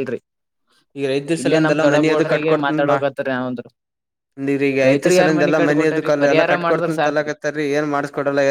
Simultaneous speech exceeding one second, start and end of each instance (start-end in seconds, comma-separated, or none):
4.9-7.3